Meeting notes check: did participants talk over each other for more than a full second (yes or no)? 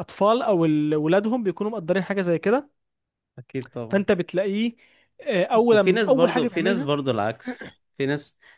yes